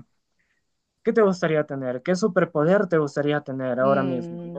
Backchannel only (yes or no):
no